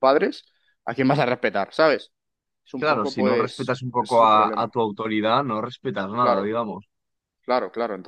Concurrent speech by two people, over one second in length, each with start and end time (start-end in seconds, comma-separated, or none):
2.8-4.7